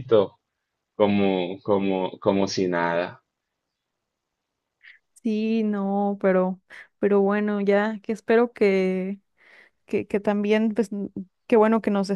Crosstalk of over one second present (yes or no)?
no